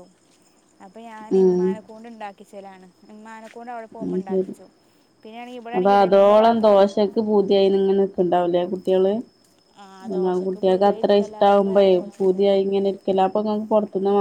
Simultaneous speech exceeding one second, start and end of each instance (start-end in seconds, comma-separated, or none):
10.1-12.6